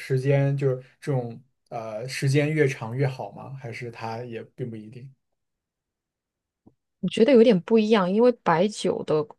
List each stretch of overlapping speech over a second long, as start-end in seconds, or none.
none